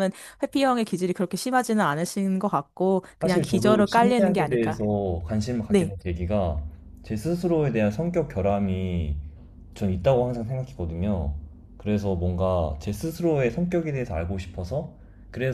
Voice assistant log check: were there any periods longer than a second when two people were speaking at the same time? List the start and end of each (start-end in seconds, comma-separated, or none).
3.2-4.8